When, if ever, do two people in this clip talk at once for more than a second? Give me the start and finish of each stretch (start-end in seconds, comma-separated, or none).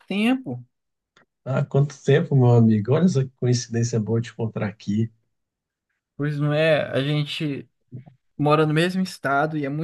none